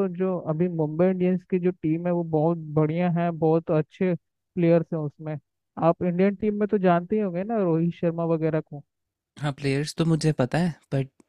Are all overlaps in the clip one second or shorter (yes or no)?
yes